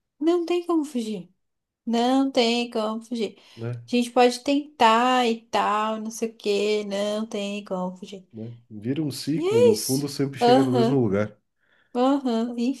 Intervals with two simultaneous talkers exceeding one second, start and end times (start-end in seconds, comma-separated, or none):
9.3-11.0